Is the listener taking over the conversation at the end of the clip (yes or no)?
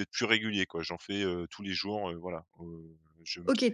yes